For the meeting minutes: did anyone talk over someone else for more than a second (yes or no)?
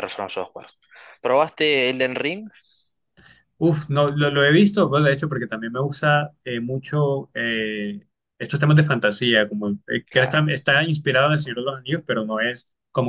no